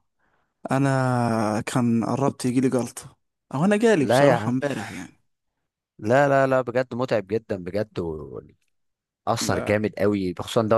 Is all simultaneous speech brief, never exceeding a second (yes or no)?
yes